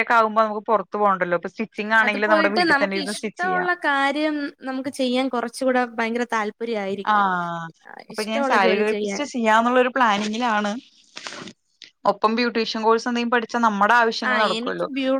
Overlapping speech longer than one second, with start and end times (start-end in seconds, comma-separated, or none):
2.0-3.7